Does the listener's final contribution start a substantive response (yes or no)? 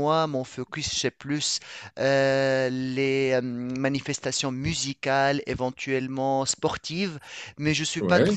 no